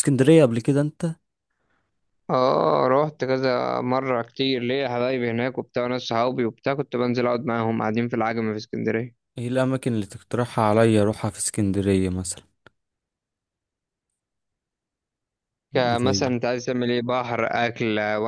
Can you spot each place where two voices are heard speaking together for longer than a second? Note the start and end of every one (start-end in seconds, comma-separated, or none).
none